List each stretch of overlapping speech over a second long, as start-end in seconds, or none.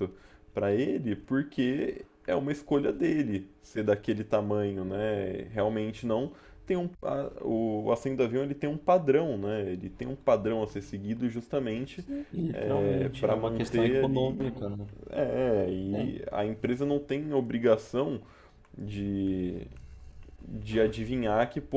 12.5-14.4